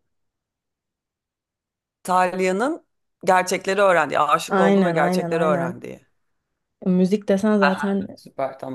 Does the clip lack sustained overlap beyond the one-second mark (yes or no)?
no